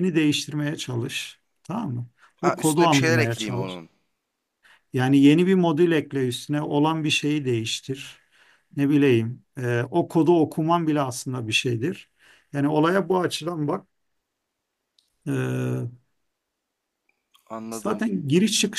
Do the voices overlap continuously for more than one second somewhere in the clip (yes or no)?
yes